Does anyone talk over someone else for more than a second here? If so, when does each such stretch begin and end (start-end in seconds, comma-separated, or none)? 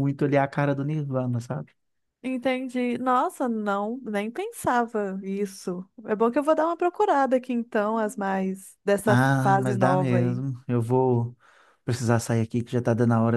9.1-10.4